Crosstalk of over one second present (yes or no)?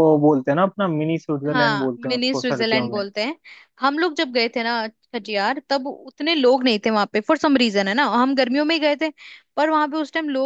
yes